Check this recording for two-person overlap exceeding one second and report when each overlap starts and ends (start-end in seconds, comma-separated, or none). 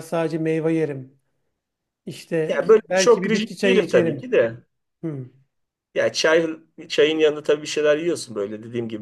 2.5-4.3